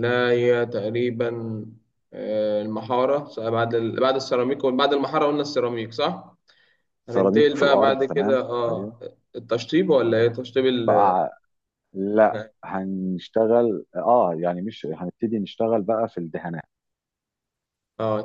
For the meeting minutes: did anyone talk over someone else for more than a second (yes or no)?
yes